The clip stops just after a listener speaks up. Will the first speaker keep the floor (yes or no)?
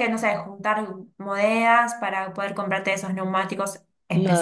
no